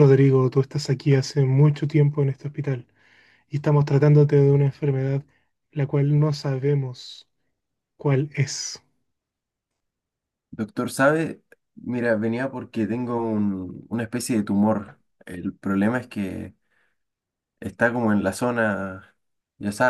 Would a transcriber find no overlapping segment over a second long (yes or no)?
yes